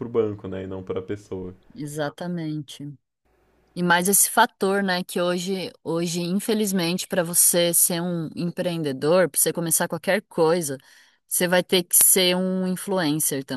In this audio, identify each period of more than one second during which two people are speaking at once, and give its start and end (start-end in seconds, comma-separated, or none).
none